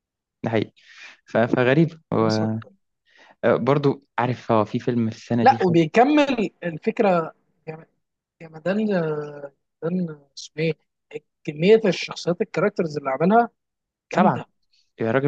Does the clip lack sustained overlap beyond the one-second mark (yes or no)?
yes